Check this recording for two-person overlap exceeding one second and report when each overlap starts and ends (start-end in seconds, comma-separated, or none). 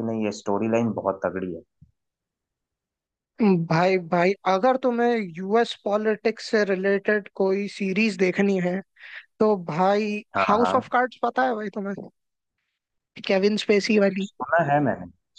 none